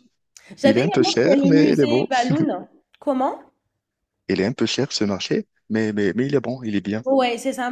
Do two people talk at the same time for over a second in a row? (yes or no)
yes